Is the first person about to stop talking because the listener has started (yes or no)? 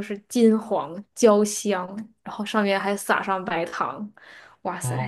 yes